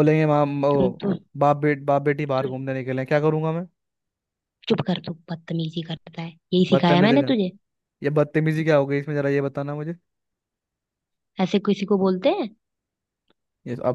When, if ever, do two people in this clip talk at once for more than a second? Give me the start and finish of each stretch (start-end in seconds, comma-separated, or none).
none